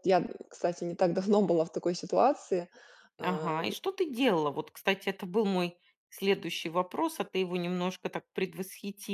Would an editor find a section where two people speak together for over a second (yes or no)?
no